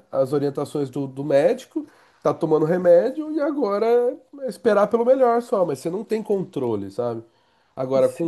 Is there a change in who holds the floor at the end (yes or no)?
no